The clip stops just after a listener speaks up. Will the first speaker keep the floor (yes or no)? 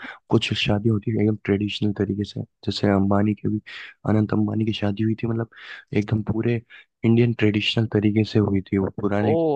no